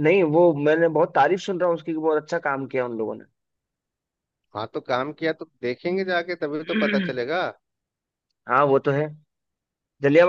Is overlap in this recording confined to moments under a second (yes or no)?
yes